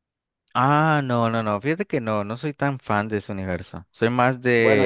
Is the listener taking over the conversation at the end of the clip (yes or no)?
no